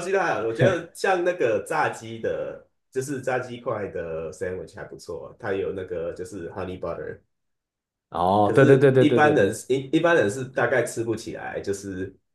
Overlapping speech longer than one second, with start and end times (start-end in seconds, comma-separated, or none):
8.4-9.6